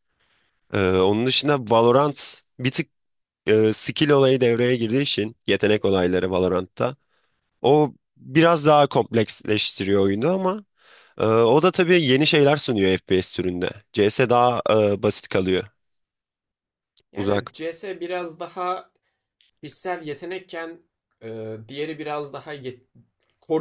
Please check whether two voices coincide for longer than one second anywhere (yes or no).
no